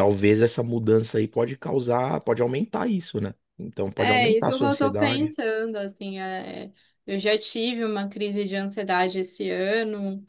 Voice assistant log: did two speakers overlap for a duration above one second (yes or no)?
yes